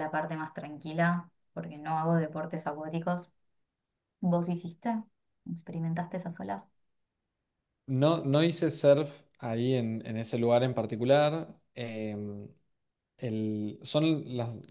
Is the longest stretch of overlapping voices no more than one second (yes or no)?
yes